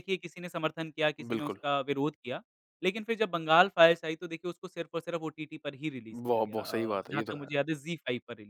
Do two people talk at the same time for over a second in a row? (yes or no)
yes